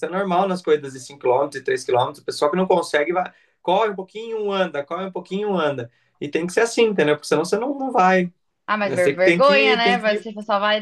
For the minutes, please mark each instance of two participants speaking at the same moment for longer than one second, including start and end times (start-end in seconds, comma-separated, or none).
8.8-10.3